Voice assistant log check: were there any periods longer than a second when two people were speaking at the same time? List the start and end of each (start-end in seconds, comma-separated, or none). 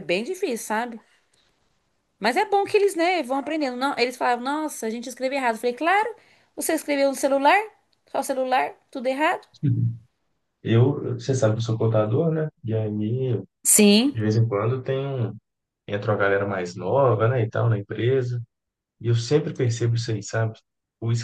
none